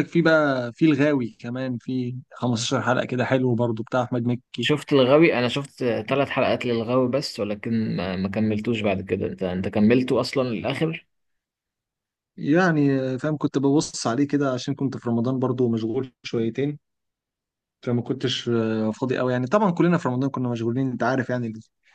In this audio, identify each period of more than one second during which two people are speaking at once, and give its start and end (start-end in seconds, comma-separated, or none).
none